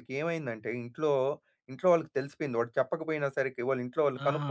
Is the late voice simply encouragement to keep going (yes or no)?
no